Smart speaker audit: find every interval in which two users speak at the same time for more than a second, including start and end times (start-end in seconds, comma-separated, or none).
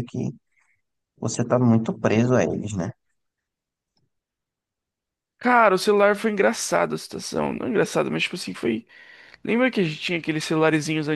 none